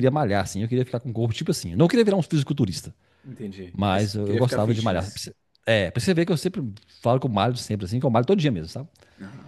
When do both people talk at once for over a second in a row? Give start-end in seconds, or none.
3.7-5.2